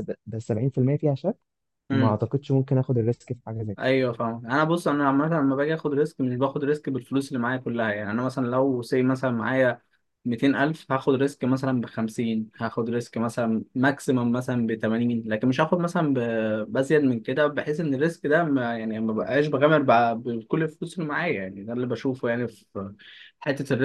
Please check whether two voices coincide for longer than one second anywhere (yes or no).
no